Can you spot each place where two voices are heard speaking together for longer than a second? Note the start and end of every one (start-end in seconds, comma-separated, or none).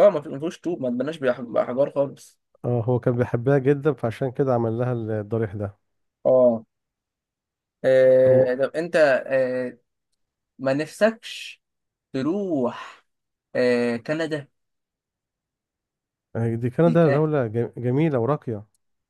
none